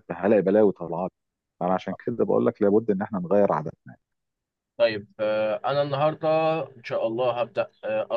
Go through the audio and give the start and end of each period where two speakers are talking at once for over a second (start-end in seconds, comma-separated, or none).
none